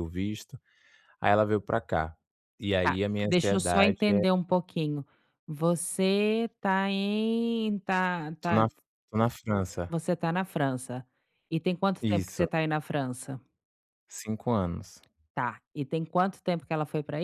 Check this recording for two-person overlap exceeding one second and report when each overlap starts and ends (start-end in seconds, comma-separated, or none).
2.8-4.2